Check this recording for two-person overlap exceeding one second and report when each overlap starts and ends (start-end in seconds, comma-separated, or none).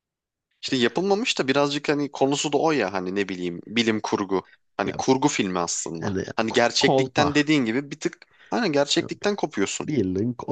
6.0-7.5